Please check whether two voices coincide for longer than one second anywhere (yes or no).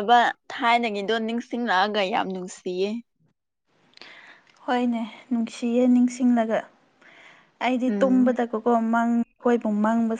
no